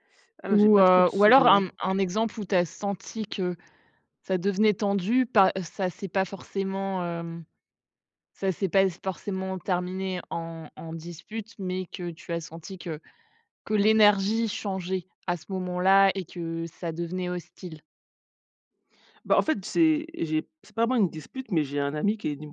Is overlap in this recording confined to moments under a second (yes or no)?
no